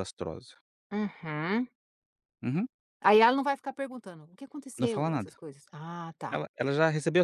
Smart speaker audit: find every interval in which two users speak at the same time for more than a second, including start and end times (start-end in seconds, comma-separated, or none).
none